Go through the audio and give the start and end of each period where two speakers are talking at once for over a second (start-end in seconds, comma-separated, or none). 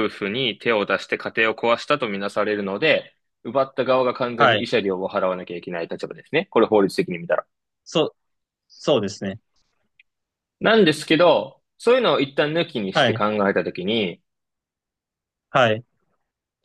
none